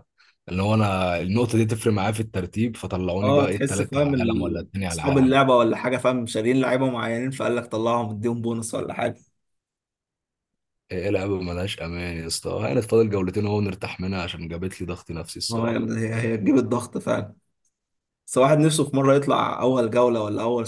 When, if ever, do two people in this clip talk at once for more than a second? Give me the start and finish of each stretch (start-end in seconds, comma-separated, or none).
3.2-5.4